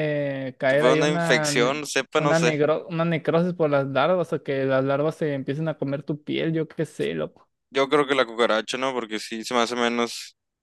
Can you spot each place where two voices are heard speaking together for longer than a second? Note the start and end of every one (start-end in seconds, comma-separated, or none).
0.7-2.6